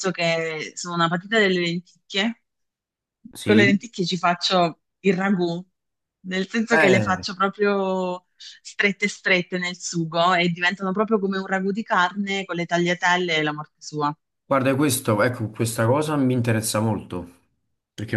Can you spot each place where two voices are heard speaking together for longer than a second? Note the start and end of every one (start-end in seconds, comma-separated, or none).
none